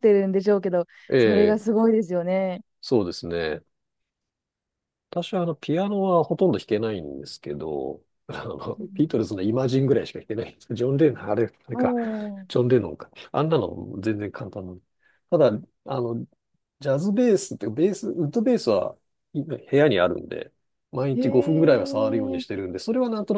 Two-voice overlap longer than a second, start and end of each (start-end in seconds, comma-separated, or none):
21.1-22.4